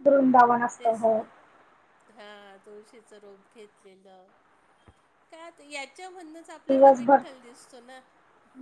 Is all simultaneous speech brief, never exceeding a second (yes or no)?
yes